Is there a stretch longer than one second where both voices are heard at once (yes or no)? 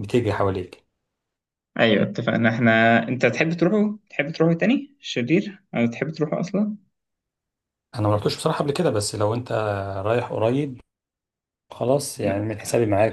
no